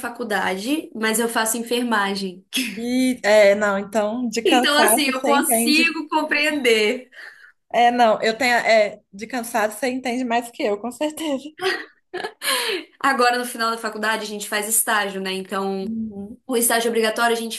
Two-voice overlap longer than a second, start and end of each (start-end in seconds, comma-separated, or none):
4.4-5.8